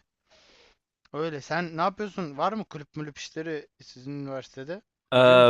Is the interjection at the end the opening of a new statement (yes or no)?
yes